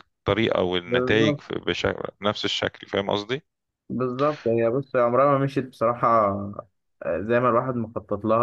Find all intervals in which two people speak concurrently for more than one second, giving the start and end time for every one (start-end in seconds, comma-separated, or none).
none